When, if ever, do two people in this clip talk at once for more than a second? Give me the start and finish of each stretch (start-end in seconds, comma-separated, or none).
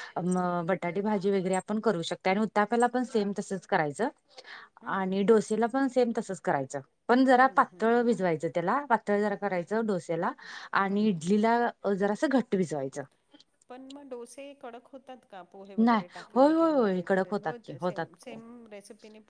15.8-18.3